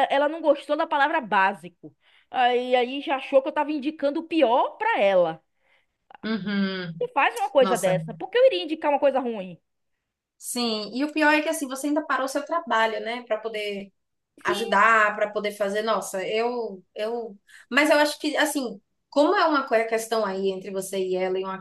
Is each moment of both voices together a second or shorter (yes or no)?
yes